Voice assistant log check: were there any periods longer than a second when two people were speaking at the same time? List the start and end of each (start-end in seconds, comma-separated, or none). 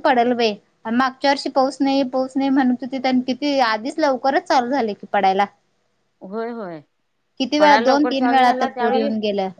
7.6-9.1